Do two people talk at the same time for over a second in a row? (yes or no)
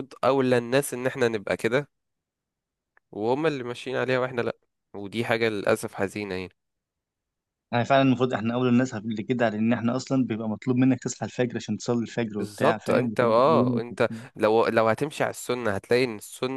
yes